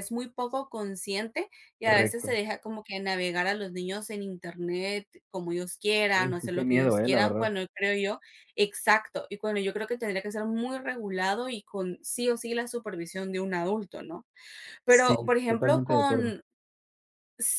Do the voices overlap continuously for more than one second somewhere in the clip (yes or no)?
yes